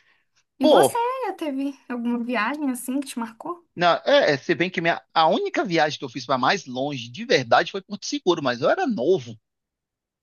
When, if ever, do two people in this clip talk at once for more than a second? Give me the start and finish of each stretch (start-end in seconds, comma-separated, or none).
none